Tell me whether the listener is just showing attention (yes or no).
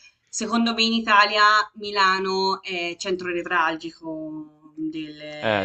yes